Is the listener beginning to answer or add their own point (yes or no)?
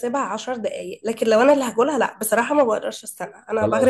yes